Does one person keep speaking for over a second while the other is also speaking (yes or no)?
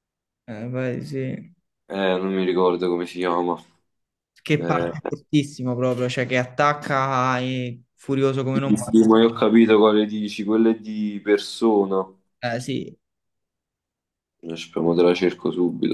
no